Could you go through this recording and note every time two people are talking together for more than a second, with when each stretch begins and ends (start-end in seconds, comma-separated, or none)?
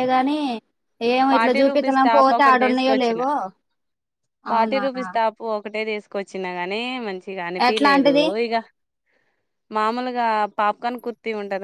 1.3-3.2